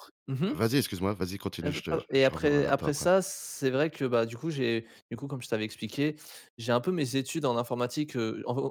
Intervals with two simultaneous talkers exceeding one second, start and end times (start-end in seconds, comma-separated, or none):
1.6-3.1